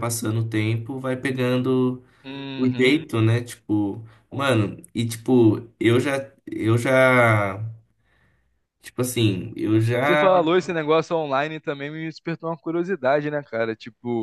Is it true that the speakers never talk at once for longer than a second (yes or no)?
yes